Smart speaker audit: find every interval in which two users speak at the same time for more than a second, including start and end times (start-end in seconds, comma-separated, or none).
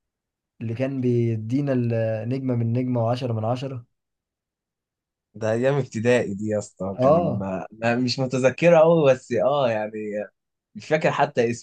none